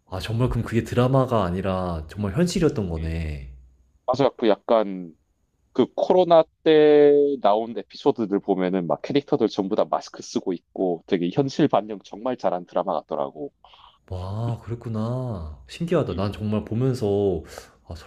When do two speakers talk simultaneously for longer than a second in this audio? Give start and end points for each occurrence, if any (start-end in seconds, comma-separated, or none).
none